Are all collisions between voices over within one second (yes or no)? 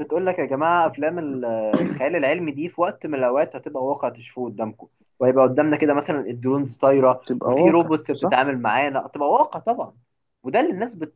no